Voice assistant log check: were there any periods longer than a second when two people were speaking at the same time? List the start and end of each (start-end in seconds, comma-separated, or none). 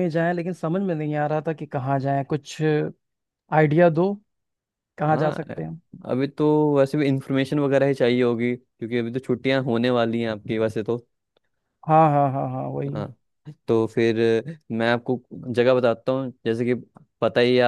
none